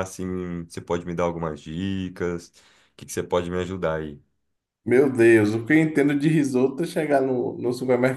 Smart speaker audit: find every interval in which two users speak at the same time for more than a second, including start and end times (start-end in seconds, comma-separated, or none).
none